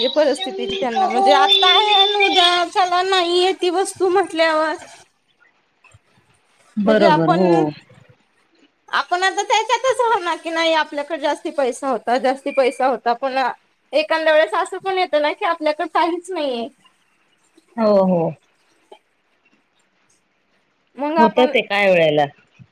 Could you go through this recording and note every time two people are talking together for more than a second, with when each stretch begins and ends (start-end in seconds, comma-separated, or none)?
none